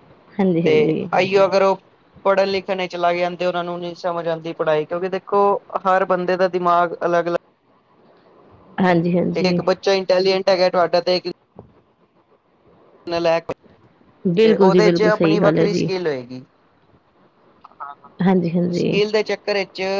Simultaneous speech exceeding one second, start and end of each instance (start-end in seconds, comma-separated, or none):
14.4-15.9